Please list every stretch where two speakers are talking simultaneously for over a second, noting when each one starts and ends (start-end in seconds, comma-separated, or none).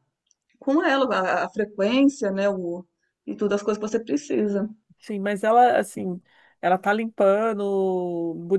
none